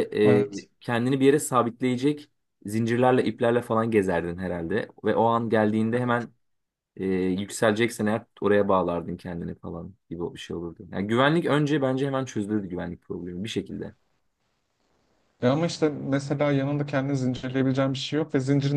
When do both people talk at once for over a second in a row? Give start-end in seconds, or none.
none